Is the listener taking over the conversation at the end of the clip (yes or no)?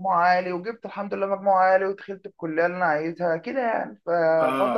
yes